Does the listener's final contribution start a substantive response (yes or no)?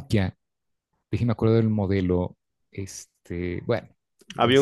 yes